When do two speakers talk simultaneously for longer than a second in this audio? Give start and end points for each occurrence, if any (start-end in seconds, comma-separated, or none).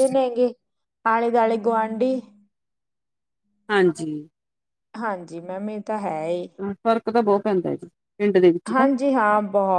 none